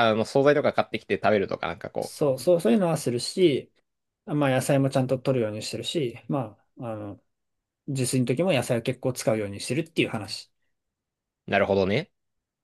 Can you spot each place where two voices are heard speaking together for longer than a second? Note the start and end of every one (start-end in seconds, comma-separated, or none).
none